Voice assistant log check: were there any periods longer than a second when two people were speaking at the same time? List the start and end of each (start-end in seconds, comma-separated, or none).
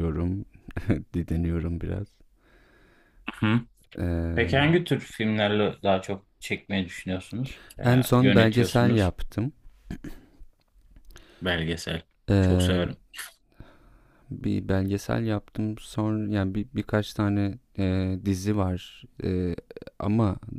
7.8-9.1